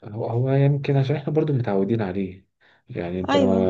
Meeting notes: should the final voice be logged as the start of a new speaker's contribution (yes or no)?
no